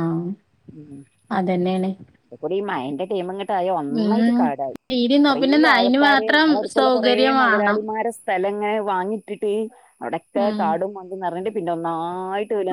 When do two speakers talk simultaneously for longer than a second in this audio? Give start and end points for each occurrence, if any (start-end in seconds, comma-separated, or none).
5.3-7.8